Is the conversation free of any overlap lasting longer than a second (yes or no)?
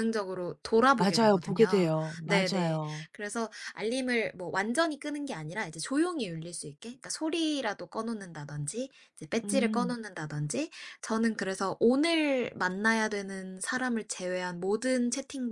no